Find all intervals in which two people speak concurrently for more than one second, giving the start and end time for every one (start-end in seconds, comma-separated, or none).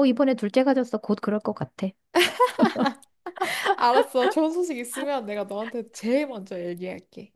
none